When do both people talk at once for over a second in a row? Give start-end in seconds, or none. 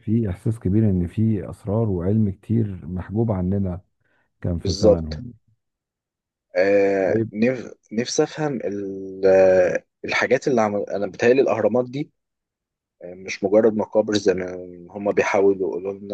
none